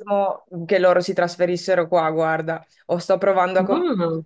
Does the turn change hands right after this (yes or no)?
no